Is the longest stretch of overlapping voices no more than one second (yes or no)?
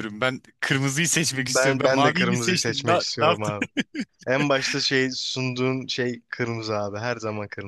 no